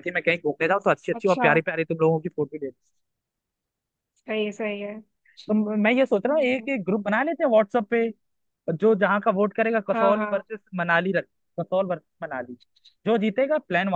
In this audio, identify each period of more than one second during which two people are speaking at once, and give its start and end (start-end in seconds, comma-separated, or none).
none